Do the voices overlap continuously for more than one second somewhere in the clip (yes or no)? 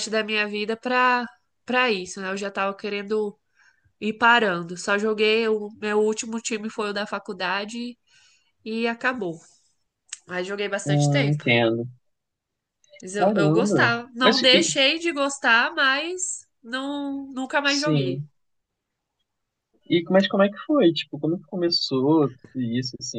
yes